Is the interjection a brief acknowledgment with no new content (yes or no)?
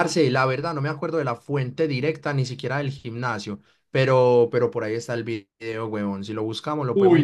no